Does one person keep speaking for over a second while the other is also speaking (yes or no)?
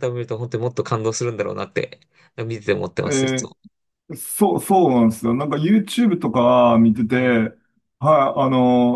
no